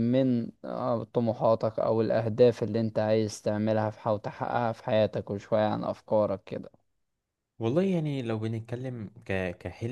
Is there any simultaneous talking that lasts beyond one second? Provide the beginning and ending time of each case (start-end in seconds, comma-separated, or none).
none